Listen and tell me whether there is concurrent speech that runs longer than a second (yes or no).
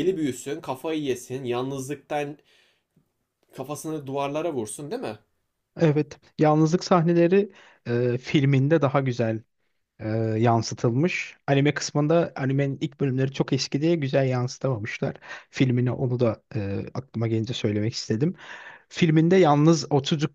no